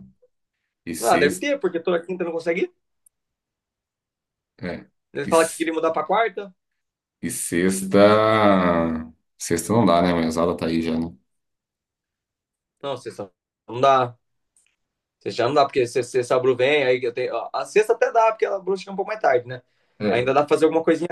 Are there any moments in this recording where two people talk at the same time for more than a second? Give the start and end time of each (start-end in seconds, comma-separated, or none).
none